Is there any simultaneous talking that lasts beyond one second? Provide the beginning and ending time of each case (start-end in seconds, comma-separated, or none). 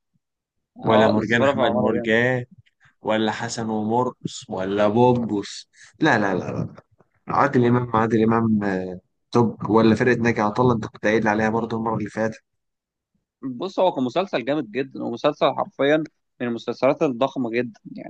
0.9-2.1